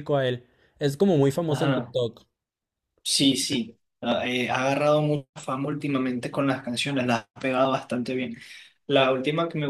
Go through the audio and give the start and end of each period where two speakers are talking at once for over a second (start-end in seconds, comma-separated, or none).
none